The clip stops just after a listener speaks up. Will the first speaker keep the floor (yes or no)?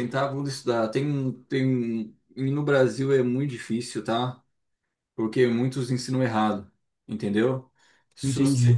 yes